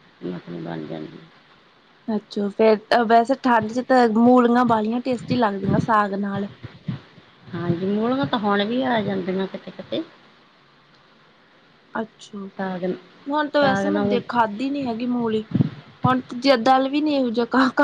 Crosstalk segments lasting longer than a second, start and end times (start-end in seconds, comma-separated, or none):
none